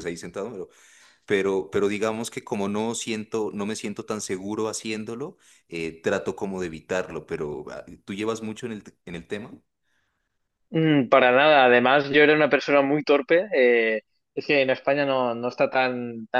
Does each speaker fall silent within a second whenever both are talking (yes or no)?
yes